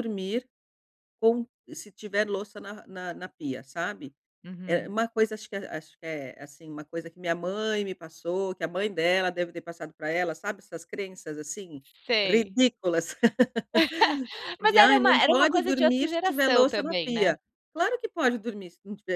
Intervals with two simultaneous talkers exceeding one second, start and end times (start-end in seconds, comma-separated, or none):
14.6-17.3